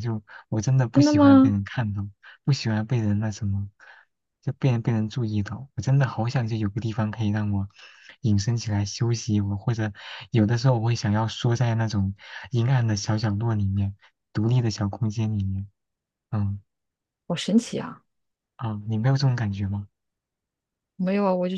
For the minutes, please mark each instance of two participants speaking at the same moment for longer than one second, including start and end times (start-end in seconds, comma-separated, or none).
none